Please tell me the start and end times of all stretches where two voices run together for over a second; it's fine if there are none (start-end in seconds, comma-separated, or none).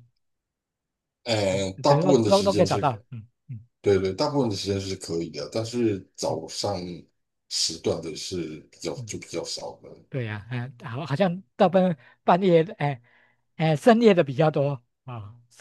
1.5-3.0